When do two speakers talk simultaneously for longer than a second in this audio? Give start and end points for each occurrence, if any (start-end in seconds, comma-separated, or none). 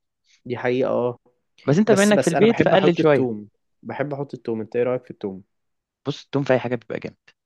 1.9-3.3